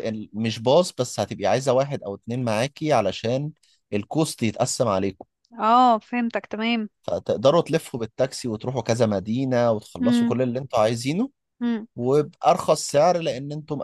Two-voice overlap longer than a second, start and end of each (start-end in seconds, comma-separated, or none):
none